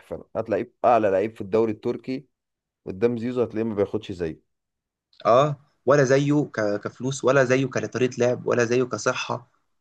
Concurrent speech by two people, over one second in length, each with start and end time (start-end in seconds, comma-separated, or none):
none